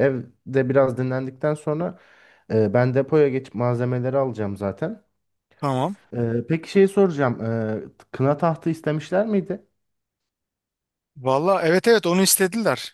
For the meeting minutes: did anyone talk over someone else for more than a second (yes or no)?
no